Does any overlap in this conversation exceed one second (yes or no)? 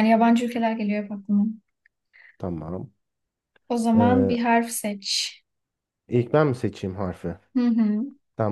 no